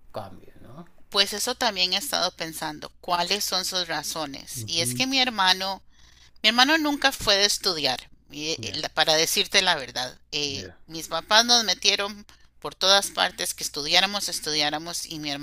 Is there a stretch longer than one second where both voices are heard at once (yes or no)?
no